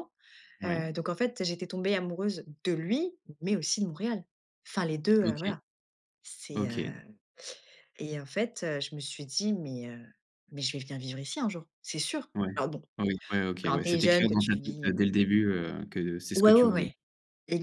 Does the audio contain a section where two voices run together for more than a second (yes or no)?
yes